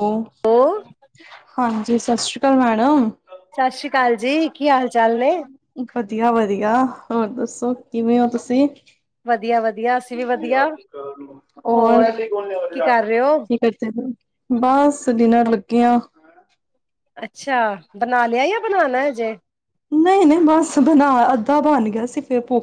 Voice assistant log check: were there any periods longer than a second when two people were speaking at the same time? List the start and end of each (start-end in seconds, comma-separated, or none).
none